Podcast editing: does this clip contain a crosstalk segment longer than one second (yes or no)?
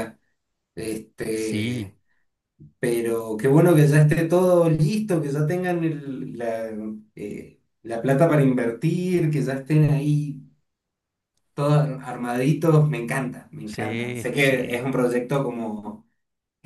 yes